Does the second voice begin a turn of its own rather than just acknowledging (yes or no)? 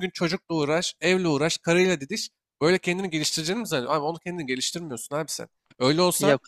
no